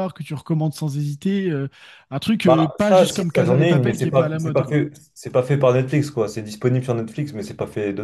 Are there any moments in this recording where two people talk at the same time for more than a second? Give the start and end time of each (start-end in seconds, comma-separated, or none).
2.4-4.8